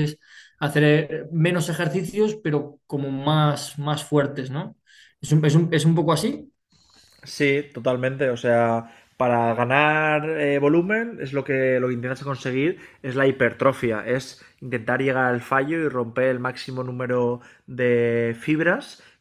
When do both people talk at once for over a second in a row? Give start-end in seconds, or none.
none